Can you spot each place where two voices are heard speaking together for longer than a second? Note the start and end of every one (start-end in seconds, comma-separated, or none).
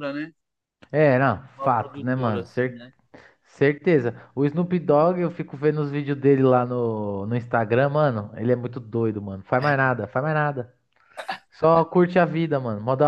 1.6-2.9